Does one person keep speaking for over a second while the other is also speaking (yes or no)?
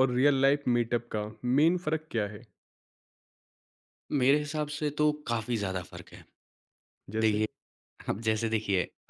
no